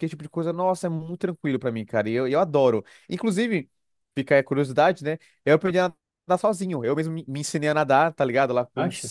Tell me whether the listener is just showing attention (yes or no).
yes